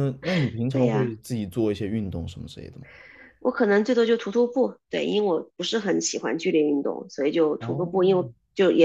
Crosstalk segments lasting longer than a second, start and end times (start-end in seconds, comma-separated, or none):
none